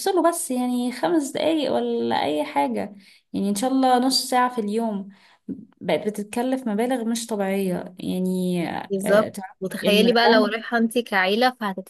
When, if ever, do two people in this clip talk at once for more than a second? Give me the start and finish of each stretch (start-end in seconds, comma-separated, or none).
9.0-10.5